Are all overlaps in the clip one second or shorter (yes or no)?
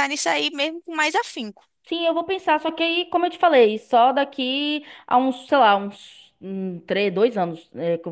yes